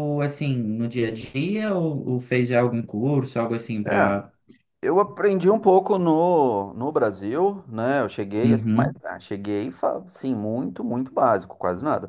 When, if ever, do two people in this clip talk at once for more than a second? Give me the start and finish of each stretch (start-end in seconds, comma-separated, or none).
none